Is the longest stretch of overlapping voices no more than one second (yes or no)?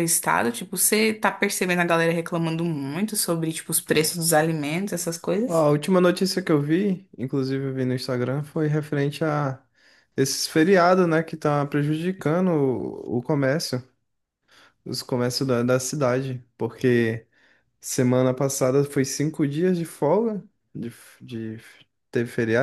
yes